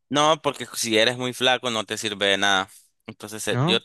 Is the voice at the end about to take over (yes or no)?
no